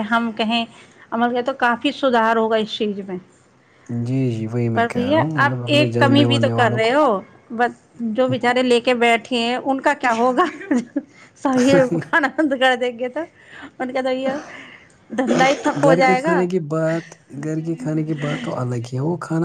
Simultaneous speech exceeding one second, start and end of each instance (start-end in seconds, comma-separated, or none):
none